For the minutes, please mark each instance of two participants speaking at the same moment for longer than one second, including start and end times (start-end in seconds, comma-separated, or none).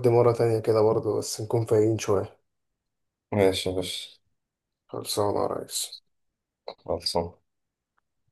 none